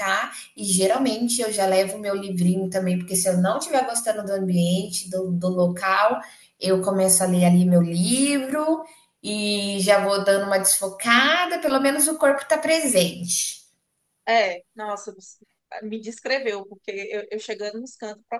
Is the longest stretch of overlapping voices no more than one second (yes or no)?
yes